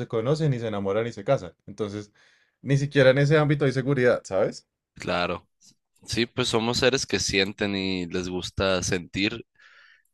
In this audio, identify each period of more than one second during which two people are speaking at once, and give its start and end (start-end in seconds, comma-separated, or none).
none